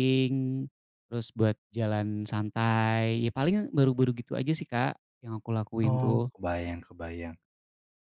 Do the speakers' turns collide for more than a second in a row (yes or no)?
no